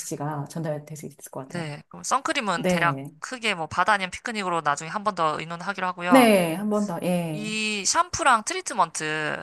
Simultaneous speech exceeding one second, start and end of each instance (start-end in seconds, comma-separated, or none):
none